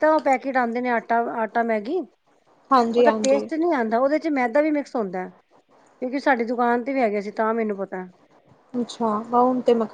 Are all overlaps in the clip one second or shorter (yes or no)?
yes